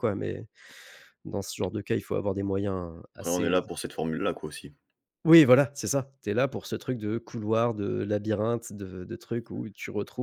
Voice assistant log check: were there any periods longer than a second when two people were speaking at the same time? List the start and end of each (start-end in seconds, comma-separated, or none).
none